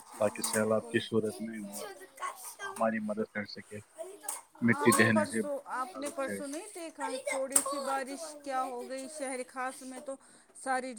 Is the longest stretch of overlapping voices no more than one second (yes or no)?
no